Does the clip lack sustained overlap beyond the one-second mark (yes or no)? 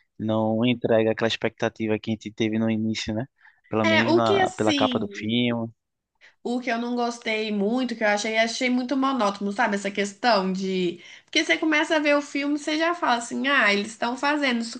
no